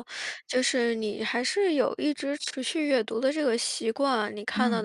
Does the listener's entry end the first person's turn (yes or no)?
no